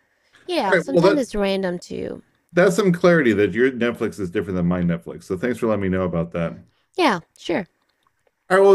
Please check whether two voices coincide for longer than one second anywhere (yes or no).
no